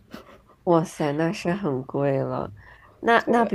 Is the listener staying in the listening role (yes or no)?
yes